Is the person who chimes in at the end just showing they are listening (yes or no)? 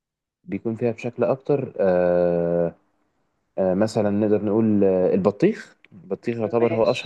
yes